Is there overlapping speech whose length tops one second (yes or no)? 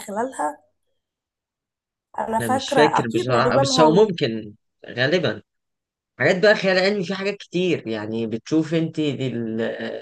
yes